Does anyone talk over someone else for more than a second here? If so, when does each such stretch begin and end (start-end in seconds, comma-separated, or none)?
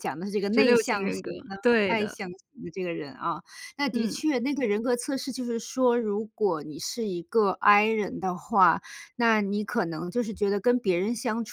0.5-2.2